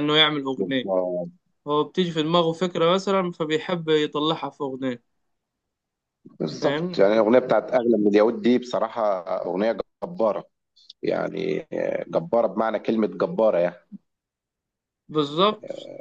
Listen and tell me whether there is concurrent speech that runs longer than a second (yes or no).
no